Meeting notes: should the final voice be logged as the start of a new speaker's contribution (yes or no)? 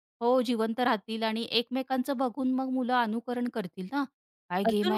yes